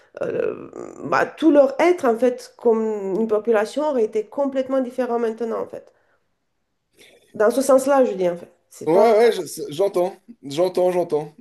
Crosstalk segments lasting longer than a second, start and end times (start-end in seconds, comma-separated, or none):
none